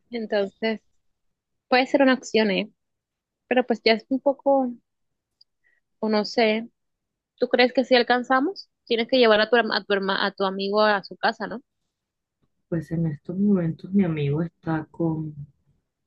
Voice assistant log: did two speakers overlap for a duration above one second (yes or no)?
no